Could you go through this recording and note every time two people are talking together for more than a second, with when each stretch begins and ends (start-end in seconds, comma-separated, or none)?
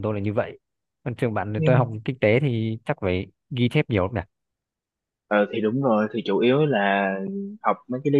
none